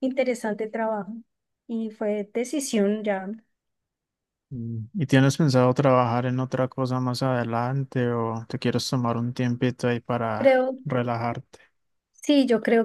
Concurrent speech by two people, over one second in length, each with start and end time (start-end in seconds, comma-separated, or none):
none